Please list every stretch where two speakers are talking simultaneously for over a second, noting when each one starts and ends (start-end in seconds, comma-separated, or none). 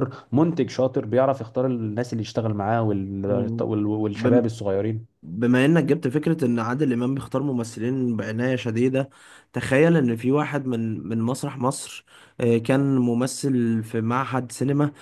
none